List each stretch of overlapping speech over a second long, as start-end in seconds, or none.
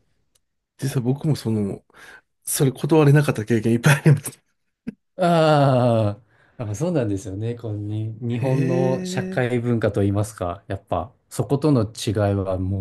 8.4-9.7